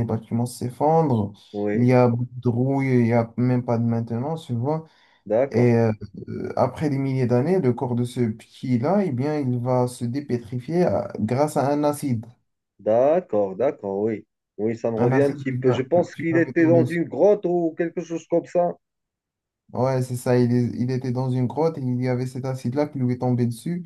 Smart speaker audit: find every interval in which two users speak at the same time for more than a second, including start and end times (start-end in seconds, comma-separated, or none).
15.0-17.0